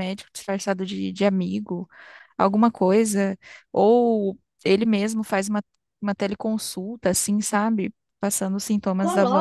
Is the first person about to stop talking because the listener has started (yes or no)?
yes